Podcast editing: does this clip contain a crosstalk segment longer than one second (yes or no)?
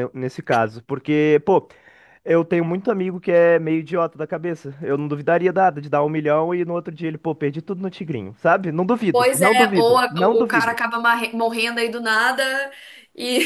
yes